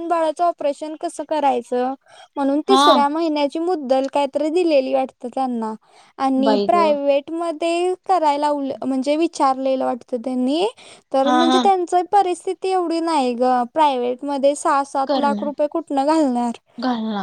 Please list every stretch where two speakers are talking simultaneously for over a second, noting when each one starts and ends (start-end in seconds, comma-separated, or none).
none